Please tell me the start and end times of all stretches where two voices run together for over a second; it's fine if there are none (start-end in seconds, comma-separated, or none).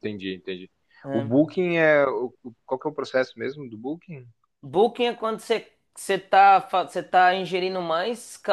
none